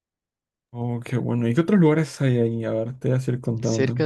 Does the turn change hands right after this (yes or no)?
yes